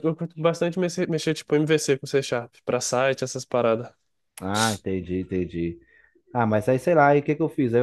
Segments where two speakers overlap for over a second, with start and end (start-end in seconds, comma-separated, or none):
none